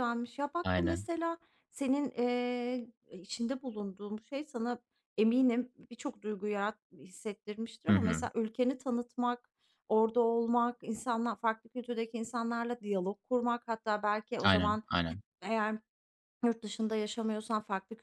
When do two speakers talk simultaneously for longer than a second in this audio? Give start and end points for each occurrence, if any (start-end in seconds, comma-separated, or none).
none